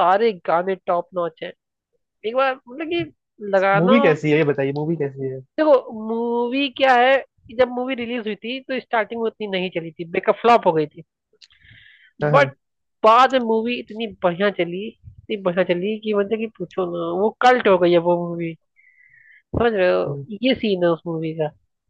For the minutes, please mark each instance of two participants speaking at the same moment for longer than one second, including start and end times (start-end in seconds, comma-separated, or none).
none